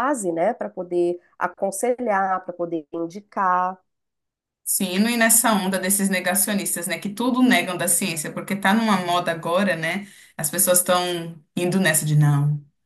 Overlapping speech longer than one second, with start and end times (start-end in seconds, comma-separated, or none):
none